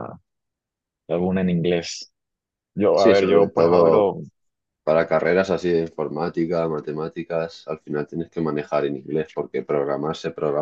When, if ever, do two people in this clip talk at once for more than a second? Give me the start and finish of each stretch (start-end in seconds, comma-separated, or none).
2.9-4.2